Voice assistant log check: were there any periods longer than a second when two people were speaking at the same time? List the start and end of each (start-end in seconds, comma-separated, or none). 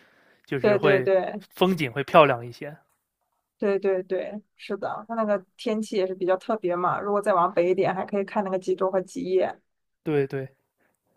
none